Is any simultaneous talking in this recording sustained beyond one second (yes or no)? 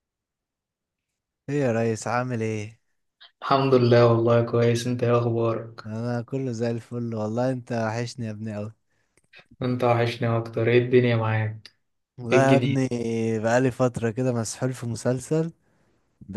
no